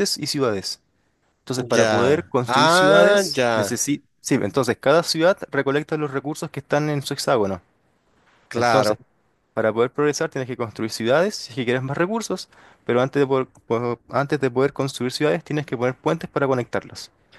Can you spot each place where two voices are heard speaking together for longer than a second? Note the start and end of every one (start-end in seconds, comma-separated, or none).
1.7-3.7